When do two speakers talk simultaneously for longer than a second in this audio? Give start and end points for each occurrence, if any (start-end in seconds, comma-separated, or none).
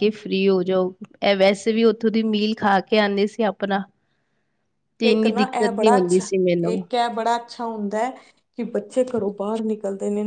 none